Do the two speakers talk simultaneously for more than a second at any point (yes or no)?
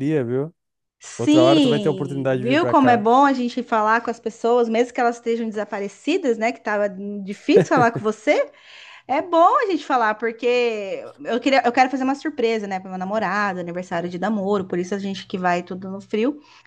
yes